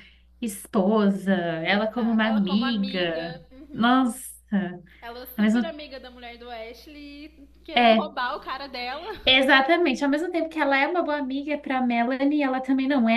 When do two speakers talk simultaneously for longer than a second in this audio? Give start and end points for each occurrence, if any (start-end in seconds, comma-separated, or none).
1.7-4.1